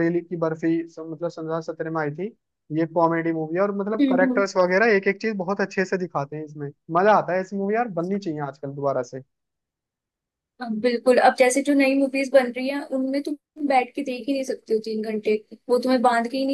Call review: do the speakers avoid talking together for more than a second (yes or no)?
yes